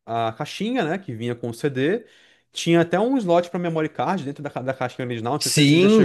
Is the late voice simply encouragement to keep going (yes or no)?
no